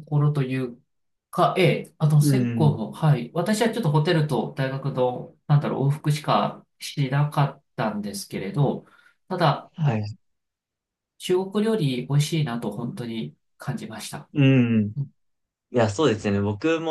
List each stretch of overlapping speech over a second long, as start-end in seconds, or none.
none